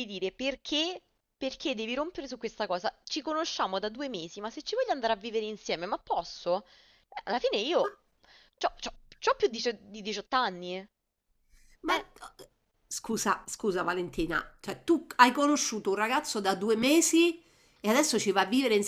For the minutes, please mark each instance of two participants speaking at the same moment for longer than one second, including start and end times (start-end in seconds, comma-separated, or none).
none